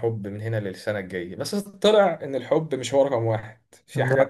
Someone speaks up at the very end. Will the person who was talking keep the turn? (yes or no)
yes